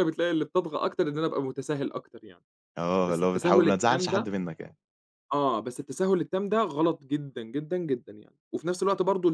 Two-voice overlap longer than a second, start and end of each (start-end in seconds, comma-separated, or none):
3.1-4.3